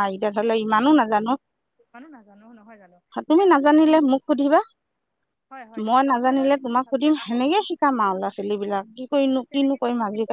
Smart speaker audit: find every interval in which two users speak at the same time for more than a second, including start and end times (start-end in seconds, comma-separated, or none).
5.8-7.8